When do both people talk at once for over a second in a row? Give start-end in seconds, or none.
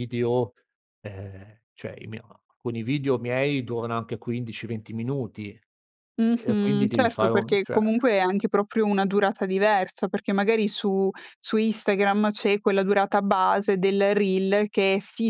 6.3-7.8